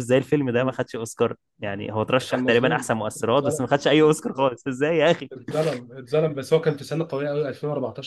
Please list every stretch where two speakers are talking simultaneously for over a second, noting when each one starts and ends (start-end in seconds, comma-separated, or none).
2.3-4.1